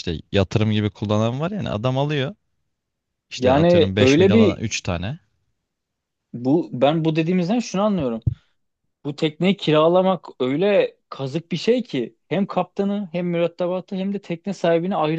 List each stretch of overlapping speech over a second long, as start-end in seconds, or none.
3.4-4.6